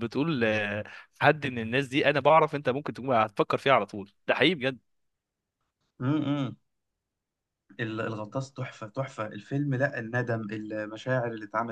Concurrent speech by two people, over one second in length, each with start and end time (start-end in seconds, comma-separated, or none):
none